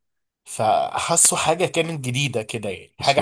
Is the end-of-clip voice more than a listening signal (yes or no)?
no